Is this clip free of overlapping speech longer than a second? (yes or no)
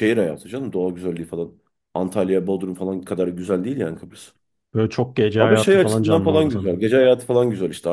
no